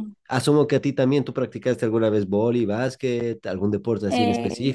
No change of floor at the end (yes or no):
no